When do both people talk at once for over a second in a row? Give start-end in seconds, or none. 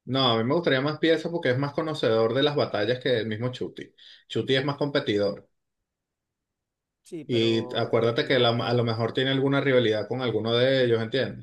7.3-8.8